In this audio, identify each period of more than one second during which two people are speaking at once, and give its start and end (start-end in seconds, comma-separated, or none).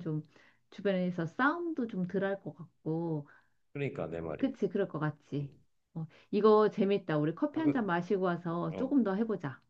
none